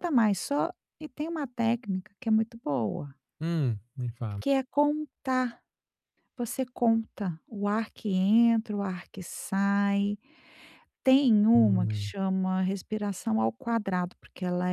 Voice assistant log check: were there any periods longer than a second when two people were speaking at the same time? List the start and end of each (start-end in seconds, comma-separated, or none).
none